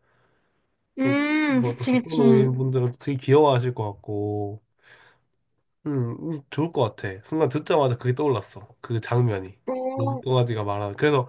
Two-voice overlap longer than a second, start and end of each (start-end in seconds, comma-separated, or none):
1.0-2.5